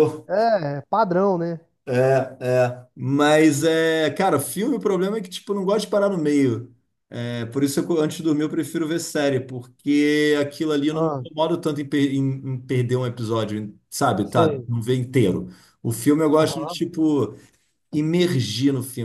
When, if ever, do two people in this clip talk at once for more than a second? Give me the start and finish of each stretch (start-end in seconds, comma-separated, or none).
none